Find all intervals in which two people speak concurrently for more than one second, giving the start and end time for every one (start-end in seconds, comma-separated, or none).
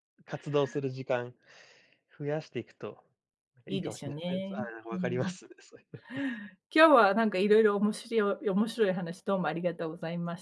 3.7-5.3